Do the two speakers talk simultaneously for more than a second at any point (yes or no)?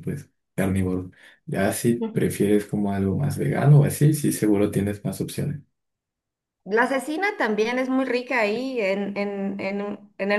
no